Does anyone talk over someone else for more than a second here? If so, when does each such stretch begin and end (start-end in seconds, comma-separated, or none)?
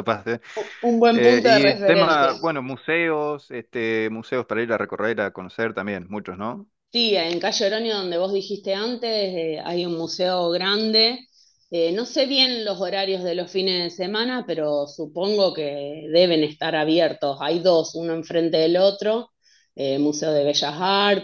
1.1-2.3